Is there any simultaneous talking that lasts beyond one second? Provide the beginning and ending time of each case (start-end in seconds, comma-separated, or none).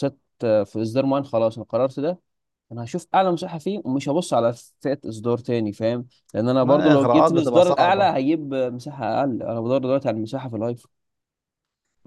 6.6-8.1